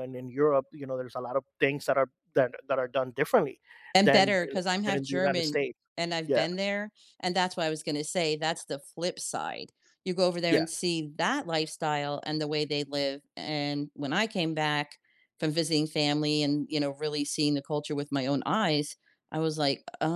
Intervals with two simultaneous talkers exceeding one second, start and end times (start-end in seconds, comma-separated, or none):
4.0-5.6